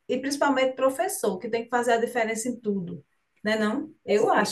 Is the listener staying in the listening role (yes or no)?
yes